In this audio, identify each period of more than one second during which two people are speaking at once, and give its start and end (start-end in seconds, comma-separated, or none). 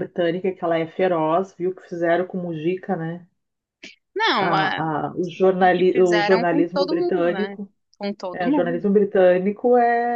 5.6-7.6